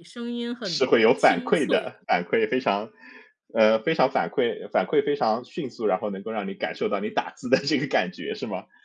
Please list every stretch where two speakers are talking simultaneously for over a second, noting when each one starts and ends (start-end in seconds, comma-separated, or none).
0.6-2.0